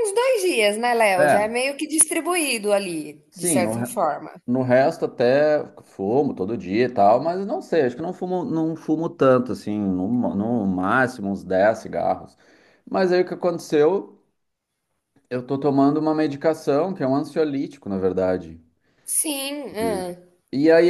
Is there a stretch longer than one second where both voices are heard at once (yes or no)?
no